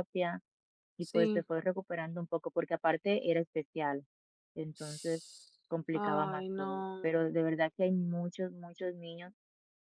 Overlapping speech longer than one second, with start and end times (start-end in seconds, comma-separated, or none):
5.9-7.4